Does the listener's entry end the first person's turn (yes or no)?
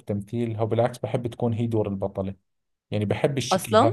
yes